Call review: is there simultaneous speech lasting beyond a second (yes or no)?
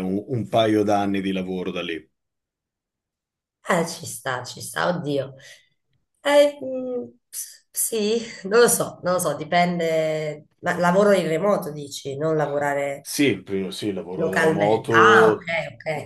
yes